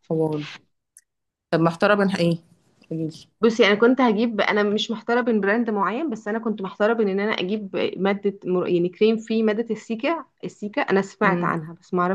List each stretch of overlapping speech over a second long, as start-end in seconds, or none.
none